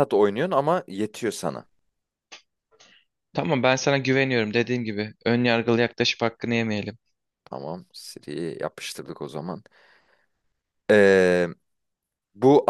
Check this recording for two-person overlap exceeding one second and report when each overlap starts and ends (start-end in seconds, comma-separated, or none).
none